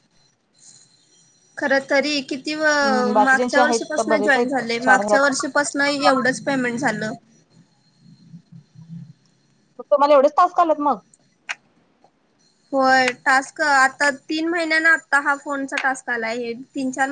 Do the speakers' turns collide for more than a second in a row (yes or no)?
yes